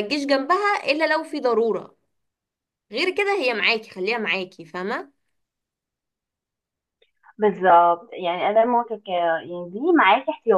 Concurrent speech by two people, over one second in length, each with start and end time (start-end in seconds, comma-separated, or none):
none